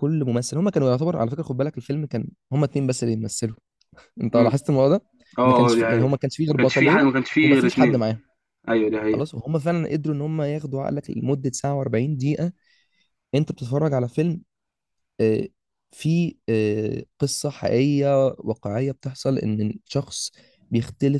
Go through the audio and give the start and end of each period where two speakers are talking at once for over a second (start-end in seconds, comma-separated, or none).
5.5-8.0